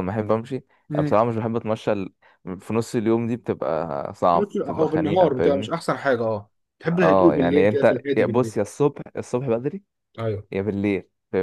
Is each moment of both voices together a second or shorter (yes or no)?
no